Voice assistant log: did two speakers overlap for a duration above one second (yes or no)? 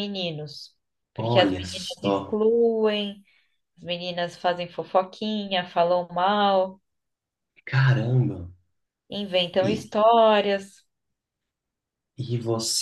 yes